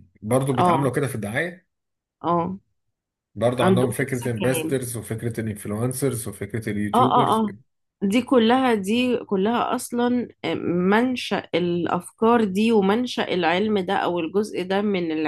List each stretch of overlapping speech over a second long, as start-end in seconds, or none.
3.6-4.8